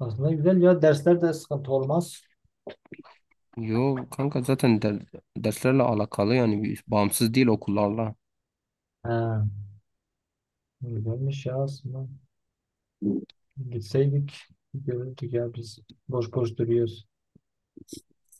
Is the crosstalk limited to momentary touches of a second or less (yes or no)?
yes